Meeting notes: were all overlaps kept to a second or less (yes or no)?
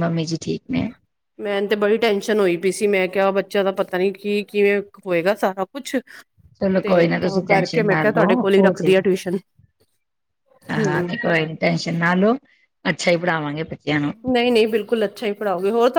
no